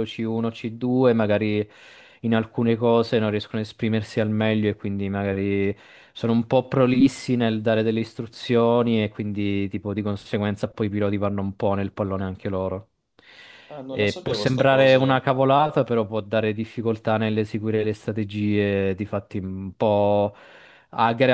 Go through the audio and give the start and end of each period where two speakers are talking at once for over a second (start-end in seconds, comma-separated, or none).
13.9-15.2